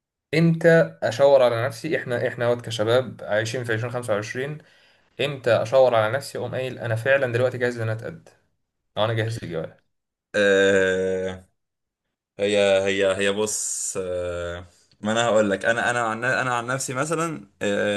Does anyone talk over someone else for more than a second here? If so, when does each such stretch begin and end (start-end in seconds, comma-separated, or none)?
none